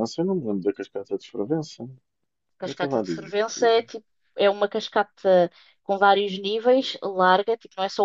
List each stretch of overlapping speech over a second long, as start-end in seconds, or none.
2.6-3.9